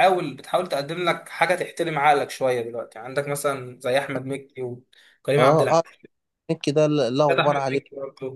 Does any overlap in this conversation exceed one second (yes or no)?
no